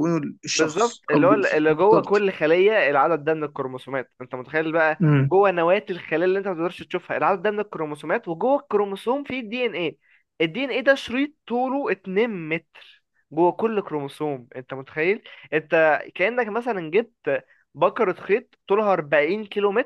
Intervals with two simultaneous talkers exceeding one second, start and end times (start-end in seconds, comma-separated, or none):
0.6-2.2